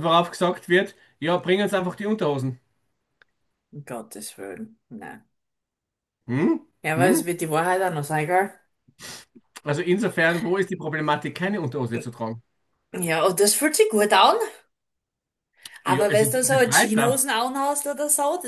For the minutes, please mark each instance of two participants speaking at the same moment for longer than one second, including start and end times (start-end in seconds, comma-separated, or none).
15.9-17.2